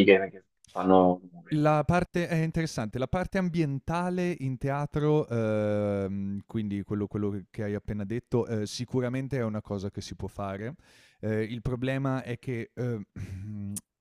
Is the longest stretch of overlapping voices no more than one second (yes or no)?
yes